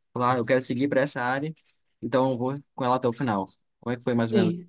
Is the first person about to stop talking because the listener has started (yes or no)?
yes